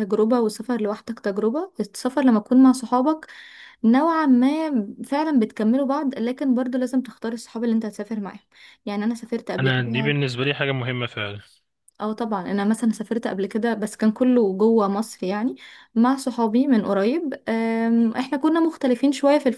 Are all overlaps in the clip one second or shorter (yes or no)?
yes